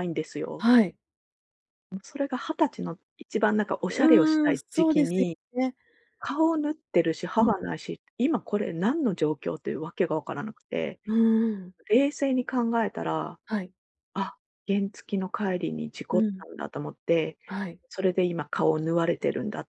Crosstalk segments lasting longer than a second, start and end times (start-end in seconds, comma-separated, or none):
3.9-5.4